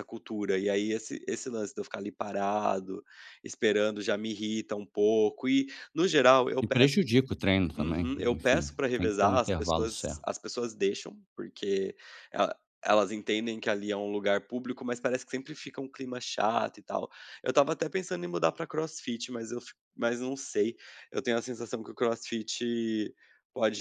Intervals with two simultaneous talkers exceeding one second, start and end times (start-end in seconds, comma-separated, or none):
7.8-10.2